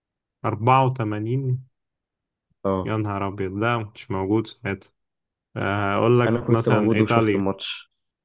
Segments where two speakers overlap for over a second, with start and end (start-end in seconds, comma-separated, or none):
6.3-7.5